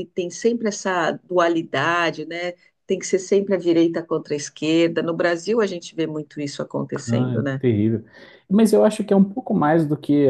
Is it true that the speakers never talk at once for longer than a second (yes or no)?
yes